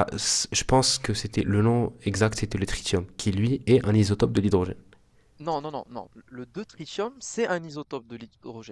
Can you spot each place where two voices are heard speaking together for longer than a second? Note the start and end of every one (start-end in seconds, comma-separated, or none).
none